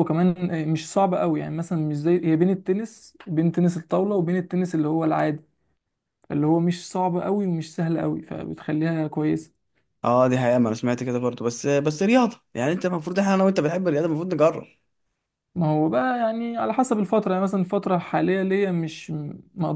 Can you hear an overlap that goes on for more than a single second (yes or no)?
no